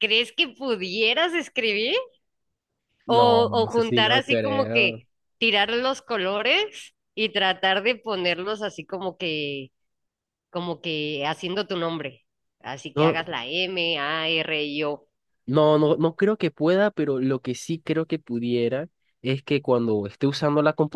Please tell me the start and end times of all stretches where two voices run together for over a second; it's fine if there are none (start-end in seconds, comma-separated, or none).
3.1-5.0